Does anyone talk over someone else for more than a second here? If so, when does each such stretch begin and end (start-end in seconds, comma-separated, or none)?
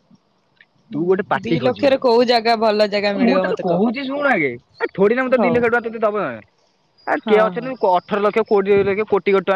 1.4-3.8